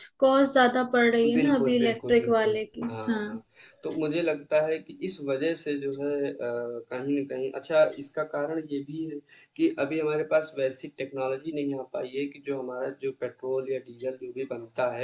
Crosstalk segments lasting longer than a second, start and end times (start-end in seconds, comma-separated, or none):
1.3-3.3